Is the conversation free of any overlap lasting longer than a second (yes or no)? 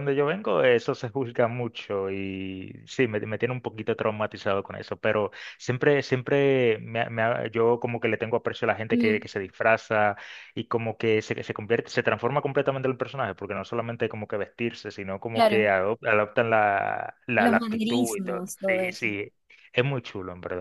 no